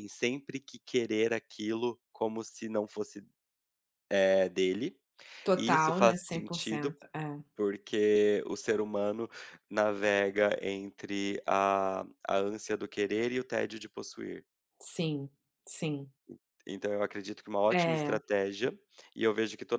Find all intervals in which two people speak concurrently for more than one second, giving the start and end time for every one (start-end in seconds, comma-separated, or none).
5.5-7.0